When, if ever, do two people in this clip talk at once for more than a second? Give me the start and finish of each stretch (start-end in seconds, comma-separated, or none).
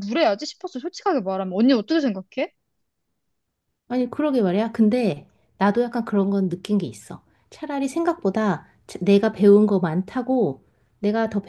none